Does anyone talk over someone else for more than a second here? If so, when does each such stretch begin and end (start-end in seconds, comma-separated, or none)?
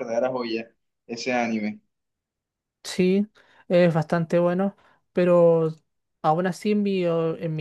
none